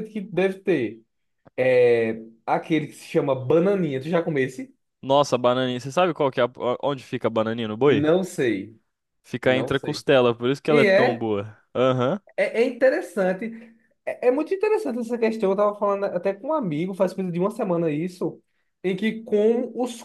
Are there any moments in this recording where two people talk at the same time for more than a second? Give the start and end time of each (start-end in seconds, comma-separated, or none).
none